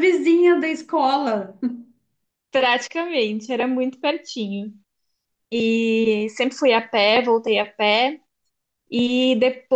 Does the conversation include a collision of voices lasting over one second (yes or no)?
no